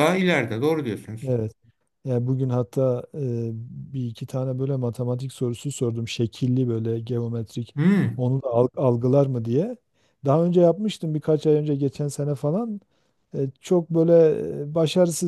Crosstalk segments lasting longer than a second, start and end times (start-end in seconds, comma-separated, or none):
none